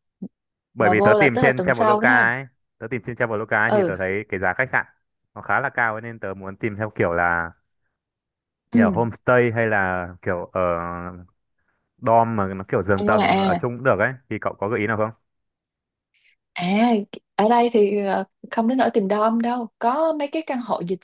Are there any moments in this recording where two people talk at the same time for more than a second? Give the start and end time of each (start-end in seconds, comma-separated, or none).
0.8-2.3